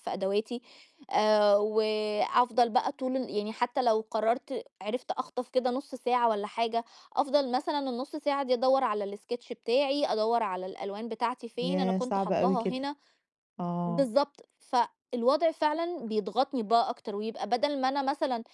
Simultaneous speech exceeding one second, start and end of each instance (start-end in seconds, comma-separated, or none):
11.6-12.8